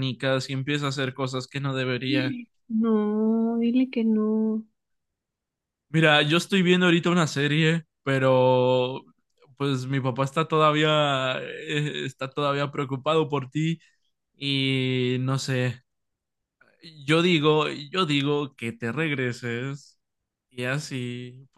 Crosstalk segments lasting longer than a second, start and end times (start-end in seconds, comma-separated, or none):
none